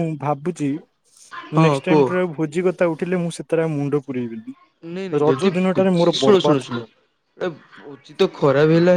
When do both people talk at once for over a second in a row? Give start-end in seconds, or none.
5.2-6.9